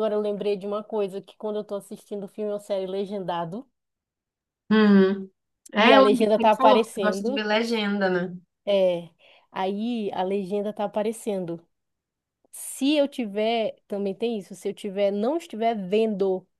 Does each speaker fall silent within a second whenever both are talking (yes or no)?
no